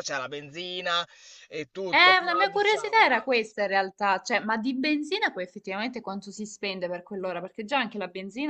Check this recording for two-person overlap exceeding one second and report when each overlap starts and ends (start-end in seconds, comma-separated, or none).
1.9-3.1